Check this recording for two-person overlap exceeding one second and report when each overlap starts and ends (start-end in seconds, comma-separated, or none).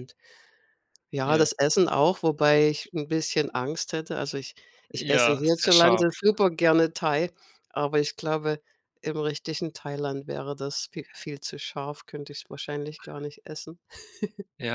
5.0-6.2